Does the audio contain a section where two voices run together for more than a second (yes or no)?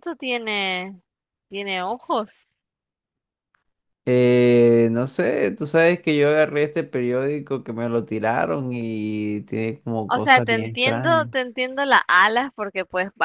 yes